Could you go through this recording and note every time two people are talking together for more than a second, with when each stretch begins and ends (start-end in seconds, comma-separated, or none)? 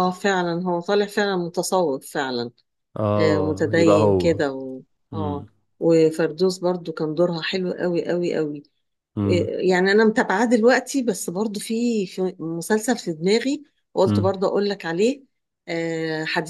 3.2-4.4